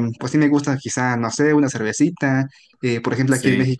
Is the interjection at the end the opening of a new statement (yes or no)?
no